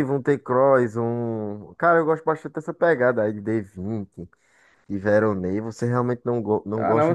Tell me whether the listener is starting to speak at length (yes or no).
yes